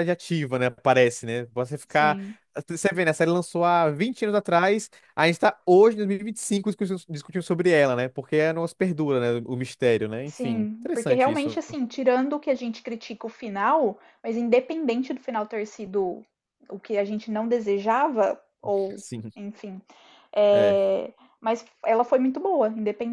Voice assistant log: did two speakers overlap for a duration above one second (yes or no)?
yes